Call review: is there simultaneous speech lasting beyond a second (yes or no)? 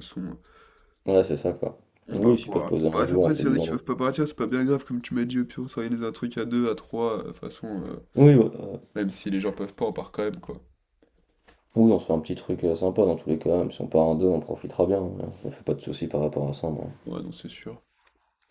yes